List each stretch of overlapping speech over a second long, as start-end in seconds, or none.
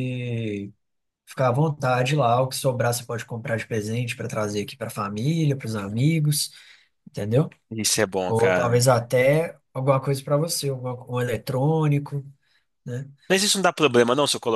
none